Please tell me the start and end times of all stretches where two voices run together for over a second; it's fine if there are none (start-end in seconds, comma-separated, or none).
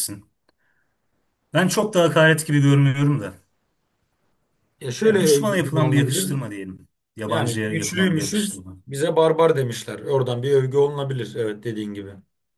5.0-6.4, 7.3-8.8